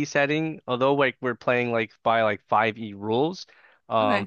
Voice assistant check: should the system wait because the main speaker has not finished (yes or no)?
yes